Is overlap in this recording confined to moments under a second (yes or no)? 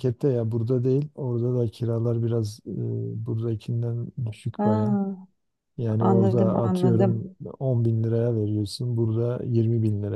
no